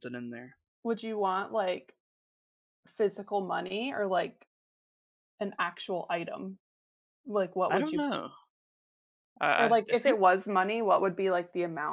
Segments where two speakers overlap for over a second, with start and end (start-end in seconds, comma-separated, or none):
none